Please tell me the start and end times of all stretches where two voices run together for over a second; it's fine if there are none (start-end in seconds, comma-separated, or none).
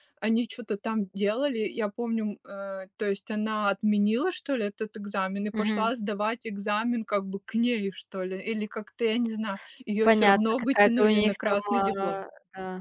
10.0-12.2